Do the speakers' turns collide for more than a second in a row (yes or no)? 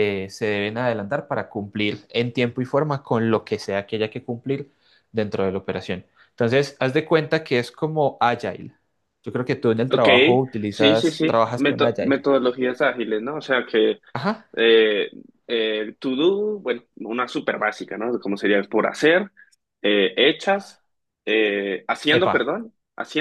yes